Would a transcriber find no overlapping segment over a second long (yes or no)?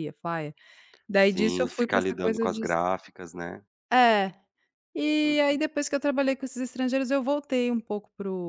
no